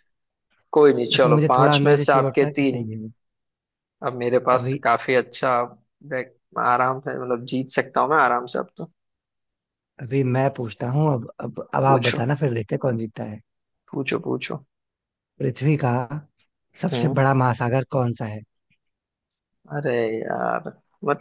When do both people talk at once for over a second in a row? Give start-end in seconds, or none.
1.1-2.9